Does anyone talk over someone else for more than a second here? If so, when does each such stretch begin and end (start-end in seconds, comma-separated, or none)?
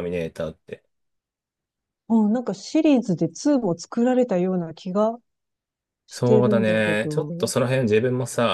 6.1-7.5